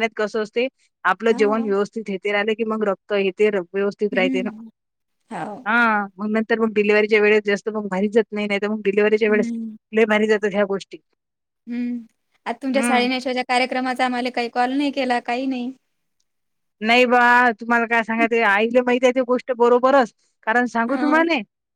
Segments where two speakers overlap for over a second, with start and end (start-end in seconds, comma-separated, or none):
none